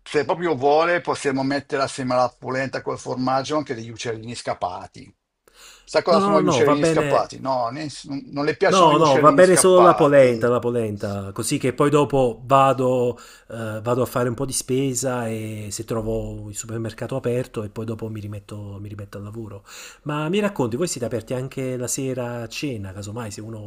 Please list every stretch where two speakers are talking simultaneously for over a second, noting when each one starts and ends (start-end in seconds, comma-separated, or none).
6.1-7.3, 8.7-10.3